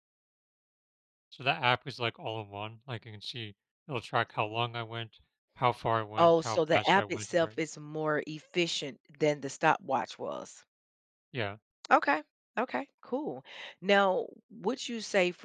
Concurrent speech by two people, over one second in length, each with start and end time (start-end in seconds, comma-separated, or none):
6.2-7.6